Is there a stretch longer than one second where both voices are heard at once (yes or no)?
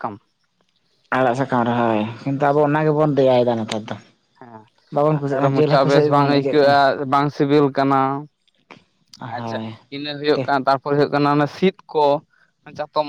yes